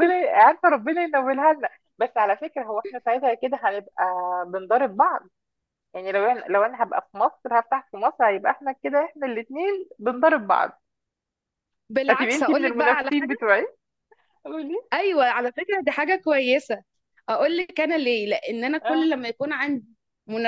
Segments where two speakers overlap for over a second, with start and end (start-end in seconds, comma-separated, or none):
12.1-13.4